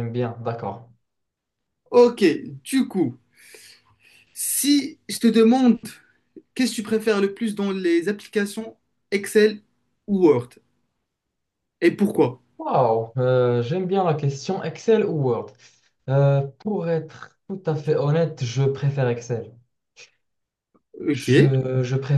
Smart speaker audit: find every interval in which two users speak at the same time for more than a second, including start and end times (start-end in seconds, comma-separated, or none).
none